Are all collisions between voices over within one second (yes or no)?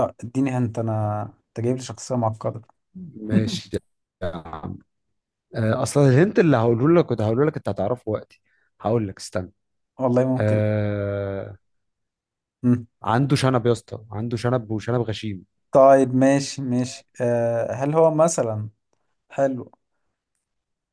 yes